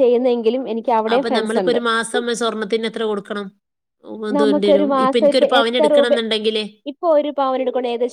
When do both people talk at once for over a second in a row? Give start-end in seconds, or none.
4.4-6.1